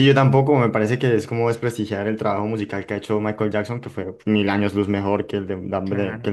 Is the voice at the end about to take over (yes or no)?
yes